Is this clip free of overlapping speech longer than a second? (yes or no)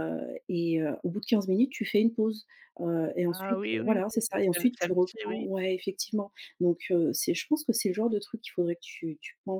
no